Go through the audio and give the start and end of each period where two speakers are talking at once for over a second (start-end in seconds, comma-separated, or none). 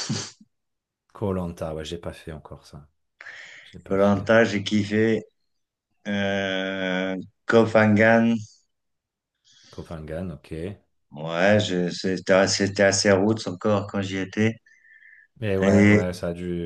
none